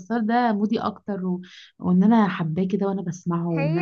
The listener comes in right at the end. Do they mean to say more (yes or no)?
yes